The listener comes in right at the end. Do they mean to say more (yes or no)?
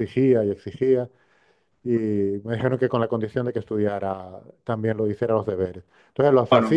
no